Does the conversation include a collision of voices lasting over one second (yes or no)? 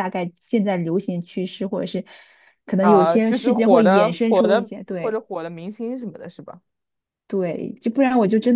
yes